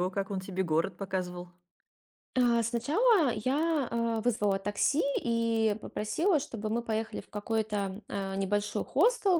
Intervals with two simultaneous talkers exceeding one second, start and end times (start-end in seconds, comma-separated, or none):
none